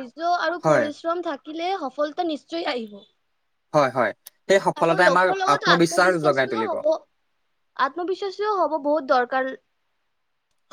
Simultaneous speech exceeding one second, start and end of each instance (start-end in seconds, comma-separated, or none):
4.8-6.7